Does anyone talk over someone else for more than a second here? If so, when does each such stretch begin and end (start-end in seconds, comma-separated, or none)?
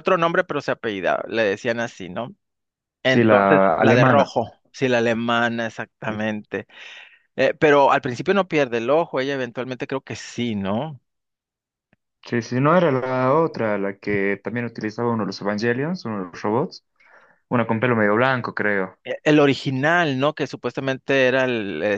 3.0-4.3